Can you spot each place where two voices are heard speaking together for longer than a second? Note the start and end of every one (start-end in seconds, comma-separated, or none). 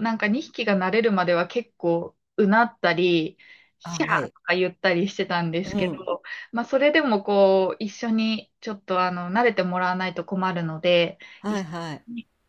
none